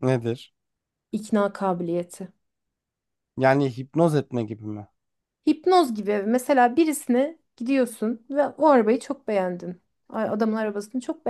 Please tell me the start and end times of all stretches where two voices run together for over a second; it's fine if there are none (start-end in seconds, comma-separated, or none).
none